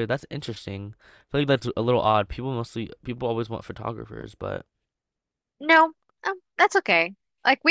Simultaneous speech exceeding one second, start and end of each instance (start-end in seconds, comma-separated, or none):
none